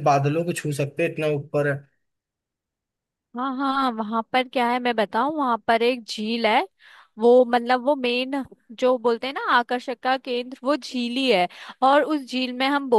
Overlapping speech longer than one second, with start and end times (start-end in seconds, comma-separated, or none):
none